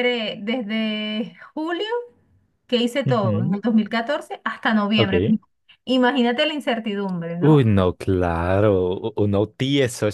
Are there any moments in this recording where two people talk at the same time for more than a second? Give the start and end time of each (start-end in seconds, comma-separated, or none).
none